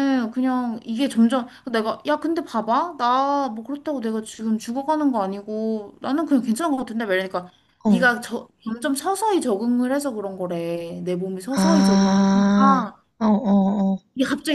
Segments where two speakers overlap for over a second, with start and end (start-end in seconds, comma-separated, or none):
11.6-12.8